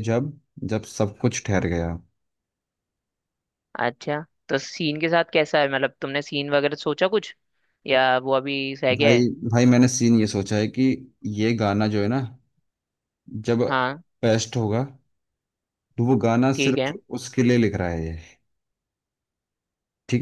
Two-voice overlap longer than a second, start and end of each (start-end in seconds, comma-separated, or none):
none